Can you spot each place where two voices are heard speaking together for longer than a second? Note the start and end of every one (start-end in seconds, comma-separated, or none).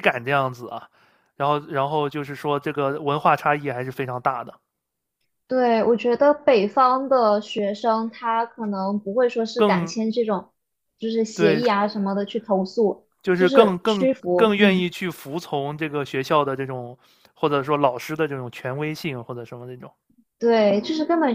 13.2-14.9